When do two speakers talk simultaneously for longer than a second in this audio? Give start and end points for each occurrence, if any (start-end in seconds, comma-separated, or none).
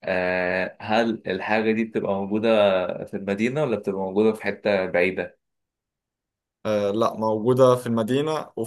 none